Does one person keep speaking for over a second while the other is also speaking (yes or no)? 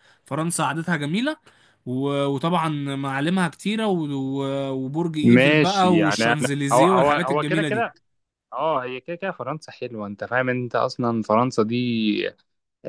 yes